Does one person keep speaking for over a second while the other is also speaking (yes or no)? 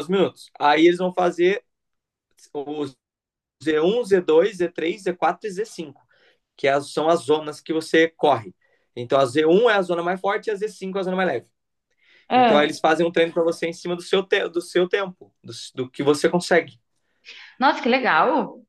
no